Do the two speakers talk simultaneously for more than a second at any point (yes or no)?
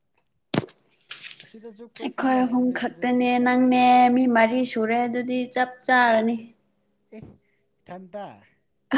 yes